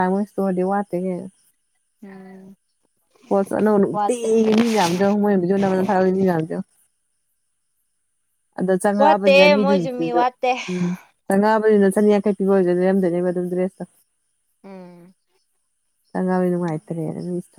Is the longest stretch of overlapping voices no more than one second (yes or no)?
no